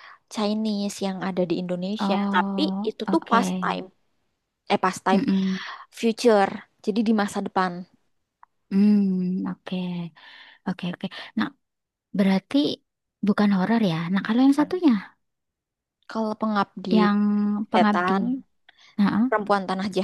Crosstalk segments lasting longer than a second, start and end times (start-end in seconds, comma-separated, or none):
2.0-3.9